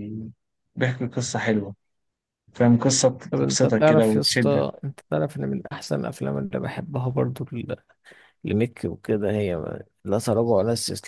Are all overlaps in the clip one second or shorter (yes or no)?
no